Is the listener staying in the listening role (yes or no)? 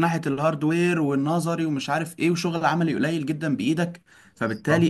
yes